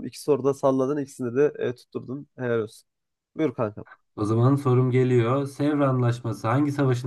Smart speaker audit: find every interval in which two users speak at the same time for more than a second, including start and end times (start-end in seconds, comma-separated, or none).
none